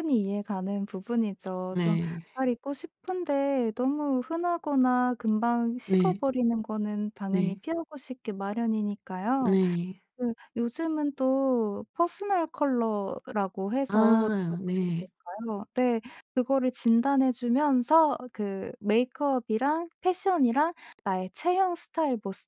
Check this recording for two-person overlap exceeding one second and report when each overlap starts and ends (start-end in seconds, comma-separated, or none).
13.9-15.1